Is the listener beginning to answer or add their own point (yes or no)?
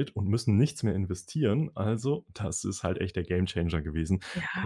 yes